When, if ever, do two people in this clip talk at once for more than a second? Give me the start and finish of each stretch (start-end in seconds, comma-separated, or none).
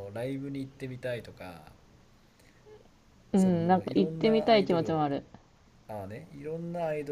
3.3-5.1